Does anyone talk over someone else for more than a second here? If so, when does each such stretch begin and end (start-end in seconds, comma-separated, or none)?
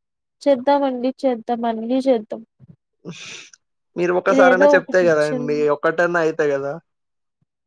4.3-5.7